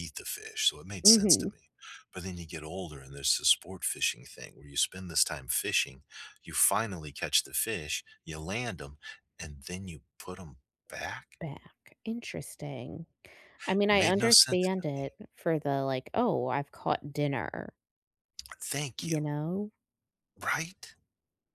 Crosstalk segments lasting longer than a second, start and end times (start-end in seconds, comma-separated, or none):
13.9-15.2